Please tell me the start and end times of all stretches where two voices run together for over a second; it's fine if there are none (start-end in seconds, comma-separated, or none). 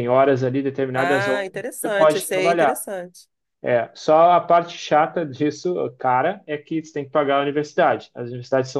0.9-2.8